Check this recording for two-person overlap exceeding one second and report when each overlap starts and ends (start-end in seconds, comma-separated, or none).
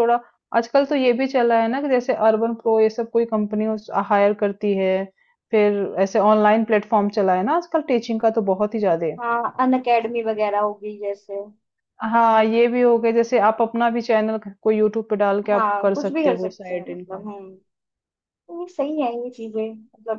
15.5-17.3